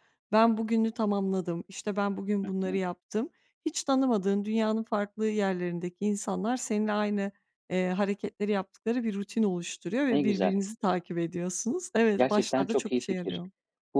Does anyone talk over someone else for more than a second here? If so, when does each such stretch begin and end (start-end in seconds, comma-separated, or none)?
12.2-13.4